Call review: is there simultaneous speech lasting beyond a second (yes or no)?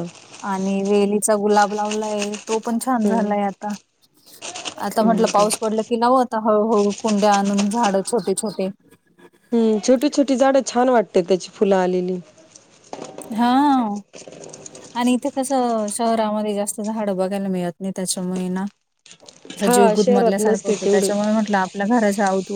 yes